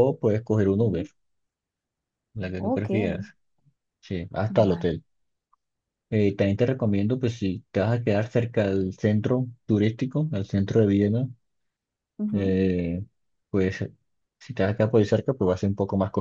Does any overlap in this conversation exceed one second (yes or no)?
no